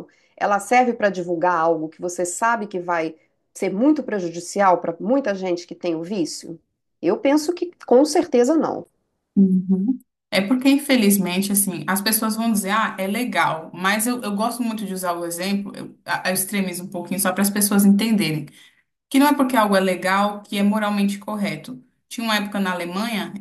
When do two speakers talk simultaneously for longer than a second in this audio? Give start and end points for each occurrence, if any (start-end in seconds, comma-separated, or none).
none